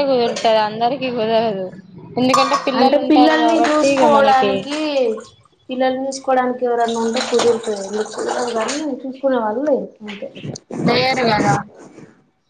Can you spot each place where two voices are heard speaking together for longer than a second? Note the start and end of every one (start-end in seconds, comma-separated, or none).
2.8-4.5